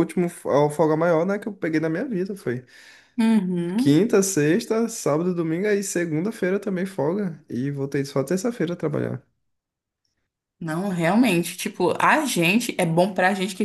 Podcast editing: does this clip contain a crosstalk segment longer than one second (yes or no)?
no